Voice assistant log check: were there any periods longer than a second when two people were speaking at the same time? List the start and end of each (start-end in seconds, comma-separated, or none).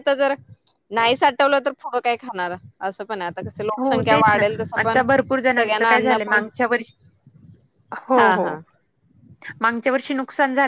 5.0-6.4